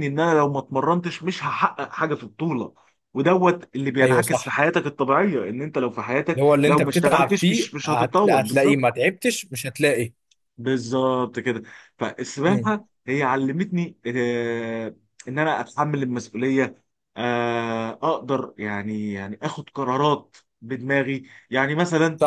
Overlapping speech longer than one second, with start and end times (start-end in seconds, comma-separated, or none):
6.3-8.8